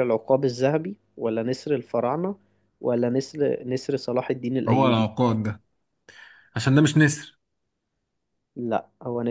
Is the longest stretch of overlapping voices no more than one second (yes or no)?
yes